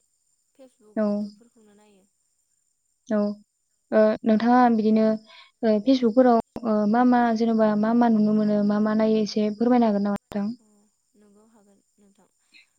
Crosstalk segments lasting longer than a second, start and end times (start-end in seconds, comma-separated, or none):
none